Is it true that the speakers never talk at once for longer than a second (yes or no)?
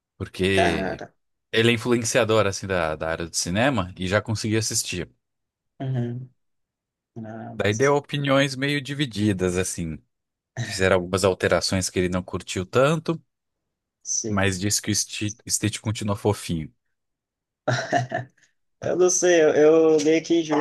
yes